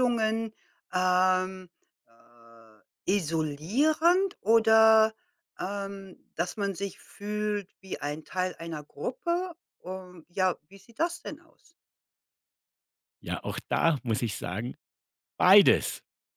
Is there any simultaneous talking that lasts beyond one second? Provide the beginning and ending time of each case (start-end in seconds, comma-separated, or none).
none